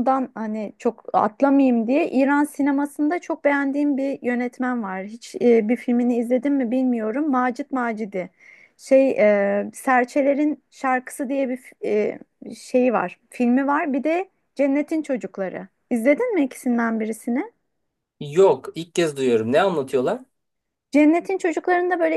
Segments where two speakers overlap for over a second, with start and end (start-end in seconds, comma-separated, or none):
none